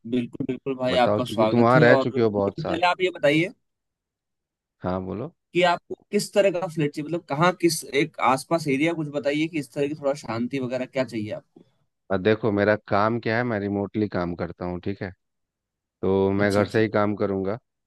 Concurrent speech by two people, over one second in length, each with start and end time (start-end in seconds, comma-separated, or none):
0.9-2.8